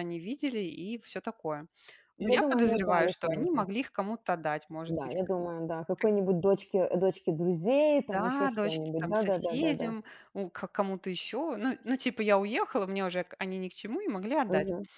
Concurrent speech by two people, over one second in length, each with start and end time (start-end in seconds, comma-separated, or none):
2.2-3.7, 8.1-9.9